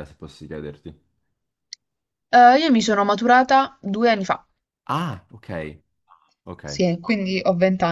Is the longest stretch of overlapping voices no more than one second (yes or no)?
yes